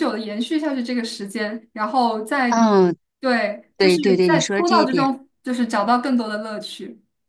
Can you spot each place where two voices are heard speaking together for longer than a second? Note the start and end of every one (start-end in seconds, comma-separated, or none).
3.8-5.1